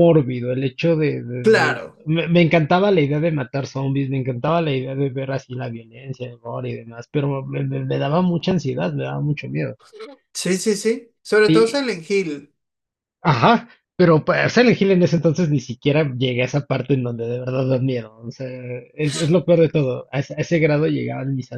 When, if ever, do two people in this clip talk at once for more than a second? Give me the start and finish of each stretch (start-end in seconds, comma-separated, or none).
none